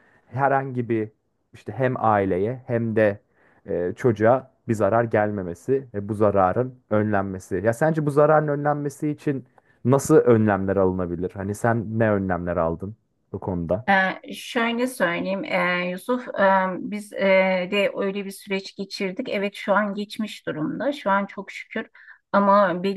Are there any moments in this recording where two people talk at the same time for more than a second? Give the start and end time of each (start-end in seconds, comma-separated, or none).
none